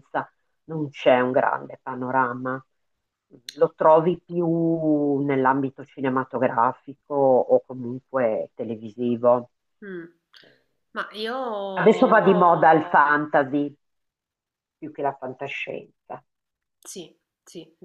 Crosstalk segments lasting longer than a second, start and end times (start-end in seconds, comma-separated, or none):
none